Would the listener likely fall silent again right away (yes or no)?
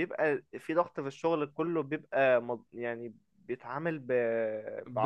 no